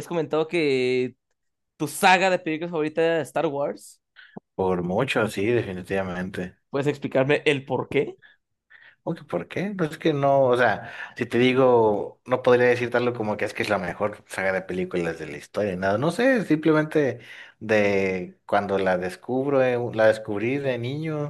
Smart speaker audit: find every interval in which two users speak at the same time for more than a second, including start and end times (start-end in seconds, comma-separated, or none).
none